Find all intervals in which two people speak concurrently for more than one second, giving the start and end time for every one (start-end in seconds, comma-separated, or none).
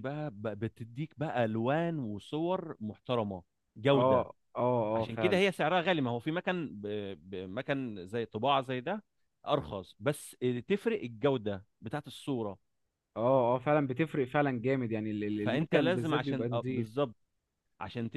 15.4-17.0